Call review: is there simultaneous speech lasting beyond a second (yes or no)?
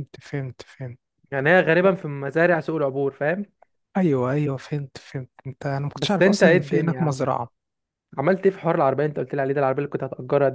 yes